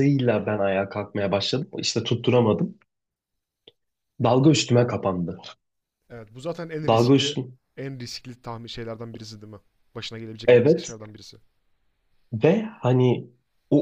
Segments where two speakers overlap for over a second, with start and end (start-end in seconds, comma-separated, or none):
none